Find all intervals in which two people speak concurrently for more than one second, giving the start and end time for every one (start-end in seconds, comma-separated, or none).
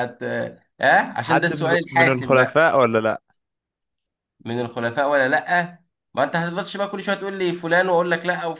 1.2-2.6